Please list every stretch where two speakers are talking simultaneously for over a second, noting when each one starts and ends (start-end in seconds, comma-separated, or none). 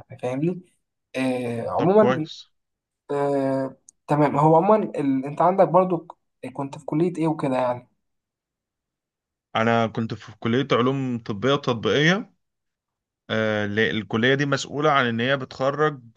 none